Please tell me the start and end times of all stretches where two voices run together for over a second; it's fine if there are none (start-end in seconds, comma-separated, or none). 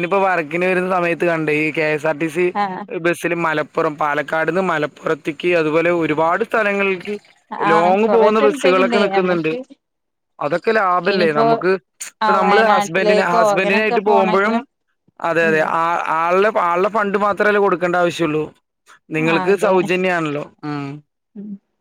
7.7-9.5, 12.4-14.6